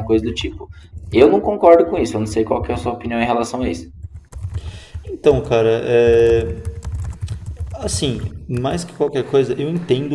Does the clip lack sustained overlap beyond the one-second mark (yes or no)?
yes